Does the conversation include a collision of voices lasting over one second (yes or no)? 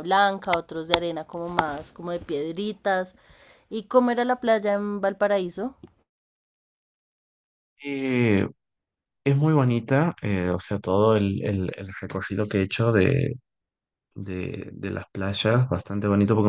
no